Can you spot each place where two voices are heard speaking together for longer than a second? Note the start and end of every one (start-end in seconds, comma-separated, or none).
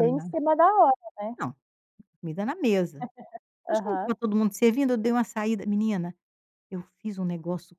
none